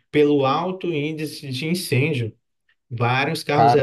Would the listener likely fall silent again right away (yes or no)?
yes